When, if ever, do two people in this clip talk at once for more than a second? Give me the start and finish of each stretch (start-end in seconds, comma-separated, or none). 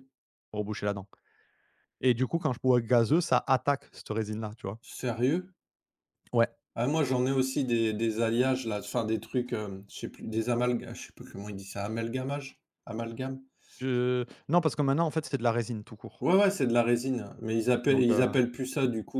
none